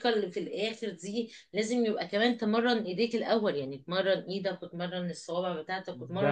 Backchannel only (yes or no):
no